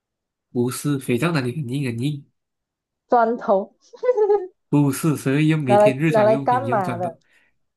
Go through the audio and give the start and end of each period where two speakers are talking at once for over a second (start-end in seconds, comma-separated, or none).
5.7-7.2